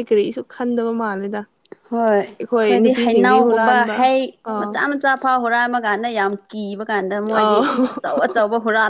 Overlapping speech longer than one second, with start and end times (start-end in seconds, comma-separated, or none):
2.4-4.0